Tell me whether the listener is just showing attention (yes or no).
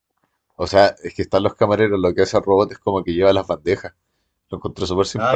no